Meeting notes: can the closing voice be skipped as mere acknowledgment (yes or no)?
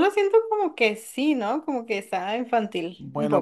no